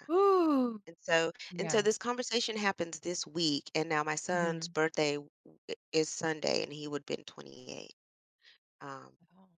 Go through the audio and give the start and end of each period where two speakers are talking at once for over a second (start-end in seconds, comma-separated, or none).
none